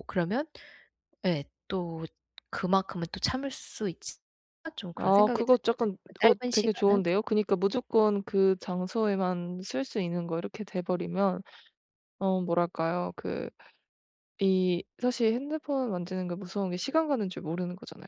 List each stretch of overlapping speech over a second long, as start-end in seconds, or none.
5.0-7.0